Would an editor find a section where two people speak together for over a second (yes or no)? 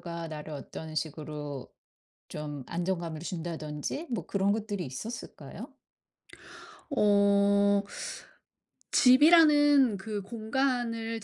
no